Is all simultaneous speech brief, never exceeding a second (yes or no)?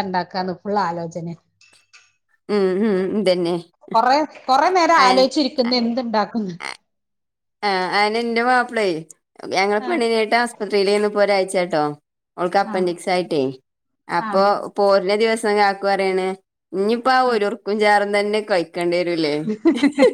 yes